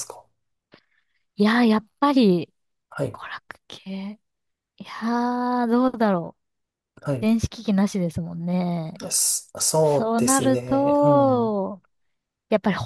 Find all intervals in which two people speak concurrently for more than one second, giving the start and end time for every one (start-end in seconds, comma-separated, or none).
9.8-11.6